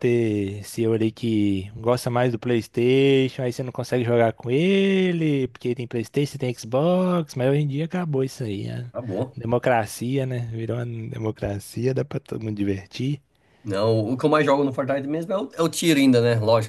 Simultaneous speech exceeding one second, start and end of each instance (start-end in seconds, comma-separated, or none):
none